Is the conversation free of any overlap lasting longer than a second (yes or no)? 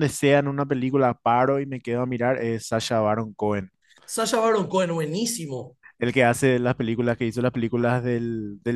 yes